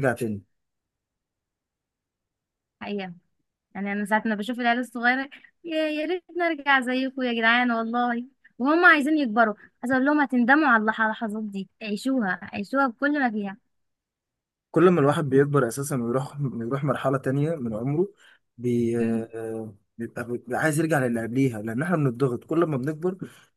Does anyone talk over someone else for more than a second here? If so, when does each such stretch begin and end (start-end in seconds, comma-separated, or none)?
none